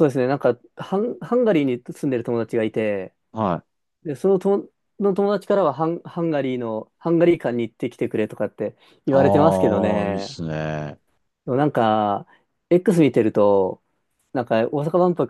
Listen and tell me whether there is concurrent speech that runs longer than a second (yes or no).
yes